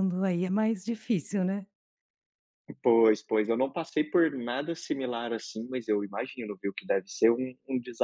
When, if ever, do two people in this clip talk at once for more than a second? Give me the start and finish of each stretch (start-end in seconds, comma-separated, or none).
none